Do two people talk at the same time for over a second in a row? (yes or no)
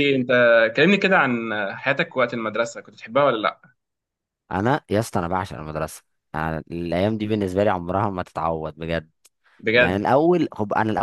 no